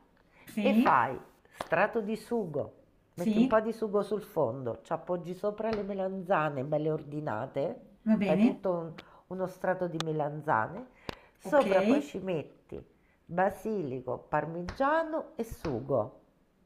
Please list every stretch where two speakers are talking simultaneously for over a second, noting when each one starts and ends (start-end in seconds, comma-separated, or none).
none